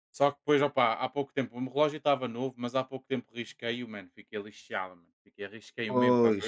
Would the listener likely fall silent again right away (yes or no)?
yes